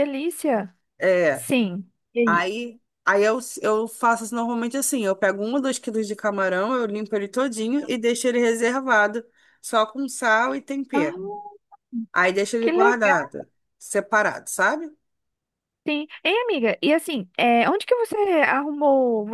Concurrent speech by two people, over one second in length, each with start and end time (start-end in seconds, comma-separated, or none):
none